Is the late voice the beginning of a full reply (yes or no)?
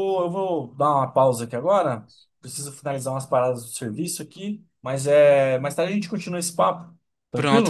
yes